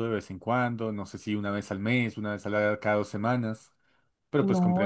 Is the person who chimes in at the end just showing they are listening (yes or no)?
no